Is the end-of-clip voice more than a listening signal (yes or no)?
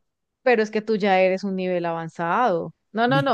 no